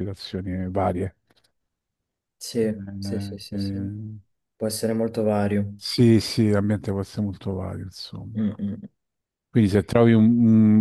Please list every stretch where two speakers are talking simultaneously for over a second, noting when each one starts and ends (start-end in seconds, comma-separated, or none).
2.6-3.9